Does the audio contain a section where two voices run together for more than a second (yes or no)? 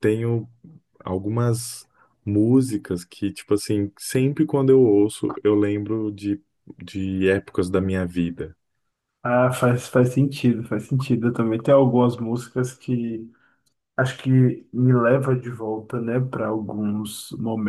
no